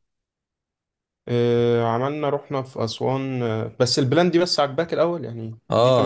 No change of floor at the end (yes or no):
no